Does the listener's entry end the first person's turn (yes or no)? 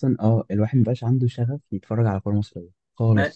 yes